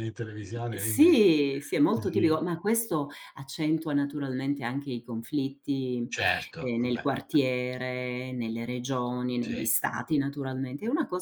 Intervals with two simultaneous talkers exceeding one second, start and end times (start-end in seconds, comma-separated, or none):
none